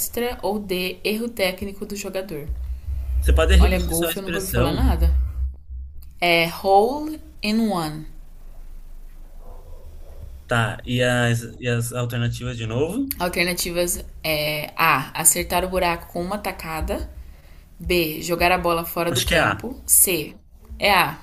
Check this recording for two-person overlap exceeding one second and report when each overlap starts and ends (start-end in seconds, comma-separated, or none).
3.6-5.0